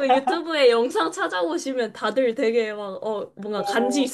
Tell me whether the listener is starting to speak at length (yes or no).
yes